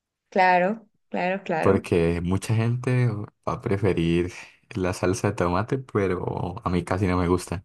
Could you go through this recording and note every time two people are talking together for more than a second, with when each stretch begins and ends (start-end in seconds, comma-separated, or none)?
none